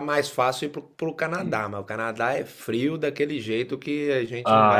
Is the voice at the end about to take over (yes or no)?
yes